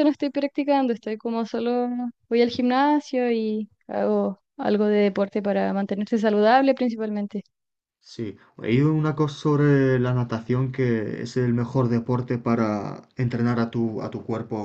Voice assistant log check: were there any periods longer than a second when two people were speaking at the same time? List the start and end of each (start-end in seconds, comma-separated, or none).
none